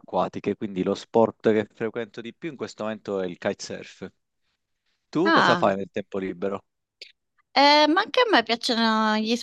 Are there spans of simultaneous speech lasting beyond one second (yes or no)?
no